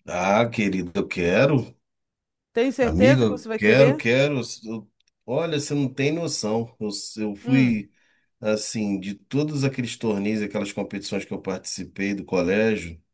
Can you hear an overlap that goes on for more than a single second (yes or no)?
yes